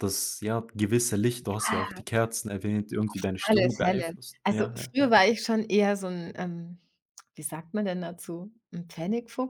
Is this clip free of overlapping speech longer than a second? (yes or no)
no